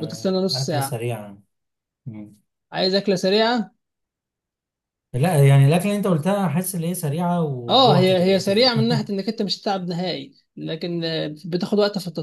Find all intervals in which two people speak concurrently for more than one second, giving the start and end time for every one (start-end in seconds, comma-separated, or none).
7.7-9.1